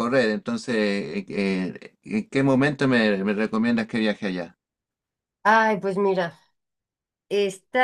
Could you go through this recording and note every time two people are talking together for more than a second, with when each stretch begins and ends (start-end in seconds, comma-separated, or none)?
none